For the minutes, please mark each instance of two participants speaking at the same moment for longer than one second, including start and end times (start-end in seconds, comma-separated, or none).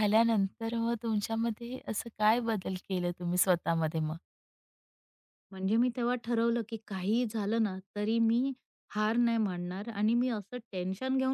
none